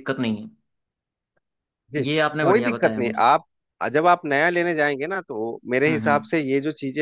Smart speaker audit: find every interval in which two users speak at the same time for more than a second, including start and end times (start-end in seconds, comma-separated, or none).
2.0-3.3